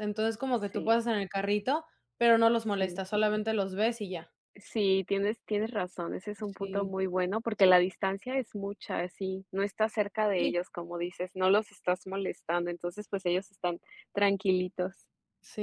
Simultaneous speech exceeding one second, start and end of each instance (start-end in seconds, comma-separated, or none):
none